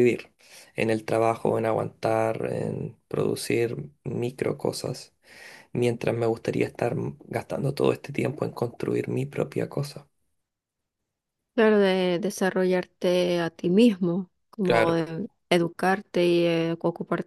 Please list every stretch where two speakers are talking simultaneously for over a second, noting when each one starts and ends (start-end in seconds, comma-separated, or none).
none